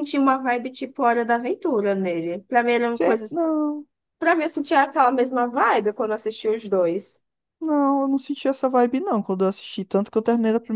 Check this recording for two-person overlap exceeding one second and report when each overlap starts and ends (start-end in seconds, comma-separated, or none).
none